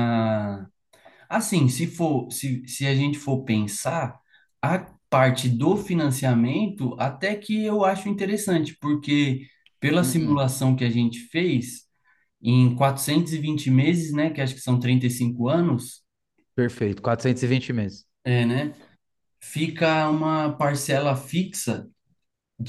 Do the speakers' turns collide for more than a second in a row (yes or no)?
no